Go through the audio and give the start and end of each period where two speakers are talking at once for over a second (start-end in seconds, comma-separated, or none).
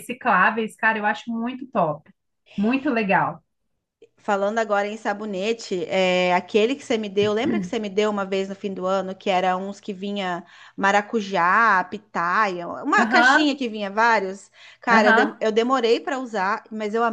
none